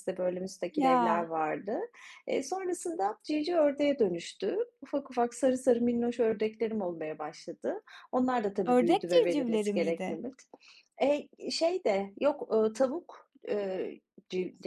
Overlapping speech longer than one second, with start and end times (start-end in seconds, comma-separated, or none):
8.7-10.2